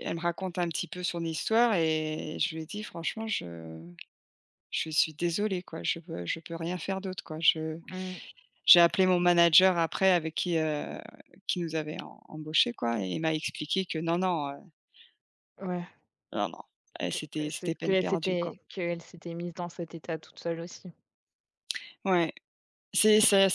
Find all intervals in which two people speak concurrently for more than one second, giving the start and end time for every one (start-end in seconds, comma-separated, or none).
17.1-18.5